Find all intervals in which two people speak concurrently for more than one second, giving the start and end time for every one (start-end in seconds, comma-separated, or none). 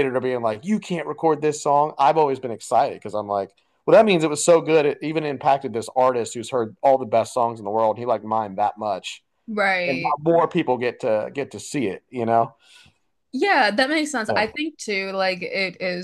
none